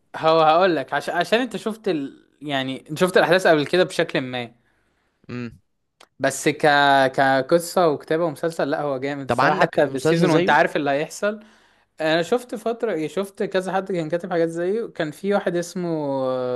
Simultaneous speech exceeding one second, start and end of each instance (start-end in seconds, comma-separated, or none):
9.3-10.6